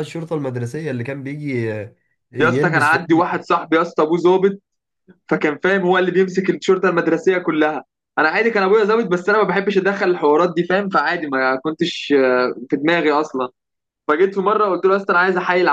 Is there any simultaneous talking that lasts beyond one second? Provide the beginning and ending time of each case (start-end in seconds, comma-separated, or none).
none